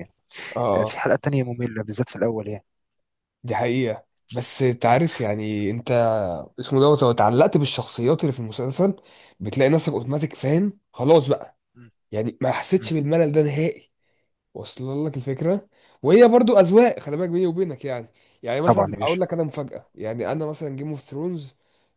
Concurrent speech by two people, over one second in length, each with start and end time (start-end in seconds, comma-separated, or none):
none